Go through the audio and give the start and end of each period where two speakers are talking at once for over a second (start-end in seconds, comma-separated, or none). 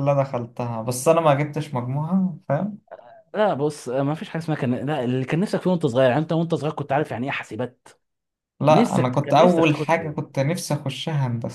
8.7-10.3